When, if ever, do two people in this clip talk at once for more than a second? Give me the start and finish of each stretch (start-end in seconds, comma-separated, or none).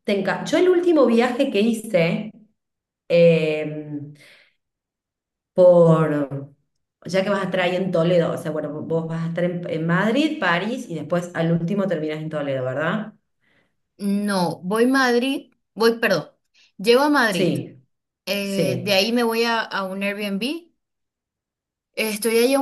none